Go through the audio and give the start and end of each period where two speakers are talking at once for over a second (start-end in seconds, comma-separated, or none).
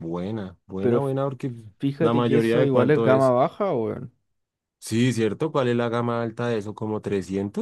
2.0-3.3